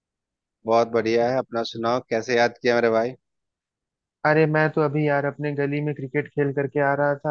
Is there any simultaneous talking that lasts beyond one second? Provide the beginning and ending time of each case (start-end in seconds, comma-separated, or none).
none